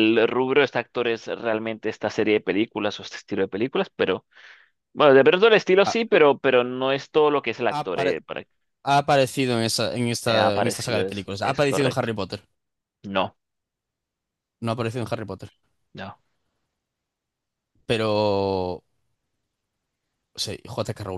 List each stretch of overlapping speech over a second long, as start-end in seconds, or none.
10.2-12.1